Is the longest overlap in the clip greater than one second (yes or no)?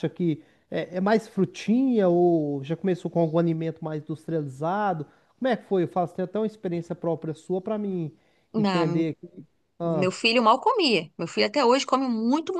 no